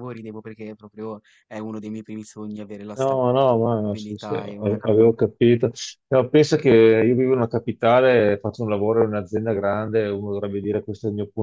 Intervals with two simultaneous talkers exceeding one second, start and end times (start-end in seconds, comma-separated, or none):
3.0-4.9